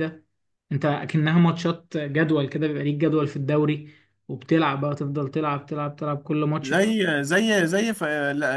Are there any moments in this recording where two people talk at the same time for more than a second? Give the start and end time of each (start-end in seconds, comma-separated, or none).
none